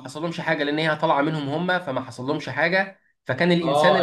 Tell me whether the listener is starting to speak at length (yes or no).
yes